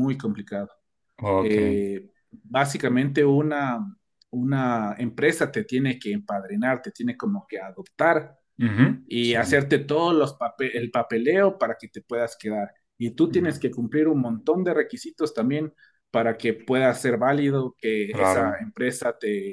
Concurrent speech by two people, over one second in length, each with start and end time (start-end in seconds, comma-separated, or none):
none